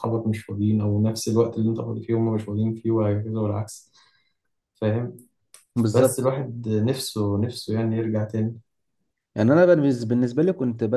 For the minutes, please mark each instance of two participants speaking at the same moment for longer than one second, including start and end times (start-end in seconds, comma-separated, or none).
none